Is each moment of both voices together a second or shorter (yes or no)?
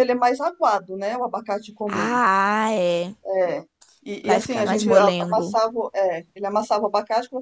no